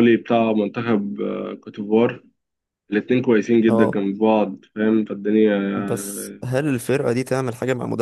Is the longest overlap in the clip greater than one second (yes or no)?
no